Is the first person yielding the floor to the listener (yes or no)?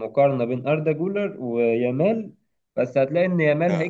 no